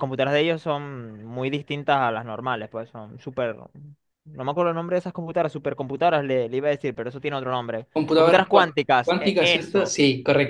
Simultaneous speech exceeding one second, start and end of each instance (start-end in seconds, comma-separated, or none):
7.9-9.9